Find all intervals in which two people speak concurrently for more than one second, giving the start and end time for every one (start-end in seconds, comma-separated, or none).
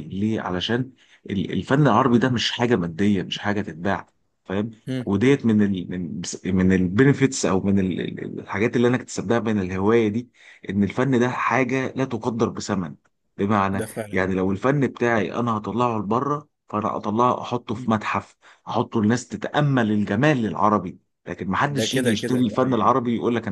21.7-23.0